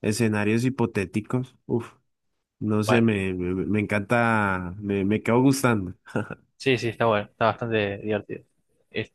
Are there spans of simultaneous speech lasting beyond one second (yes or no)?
no